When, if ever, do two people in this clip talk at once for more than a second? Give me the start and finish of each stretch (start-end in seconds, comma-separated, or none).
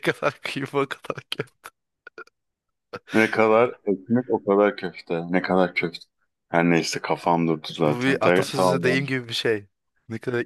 7.8-9.1